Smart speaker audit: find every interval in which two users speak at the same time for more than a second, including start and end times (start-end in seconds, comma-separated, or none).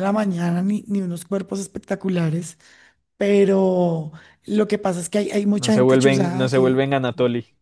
5.6-6.8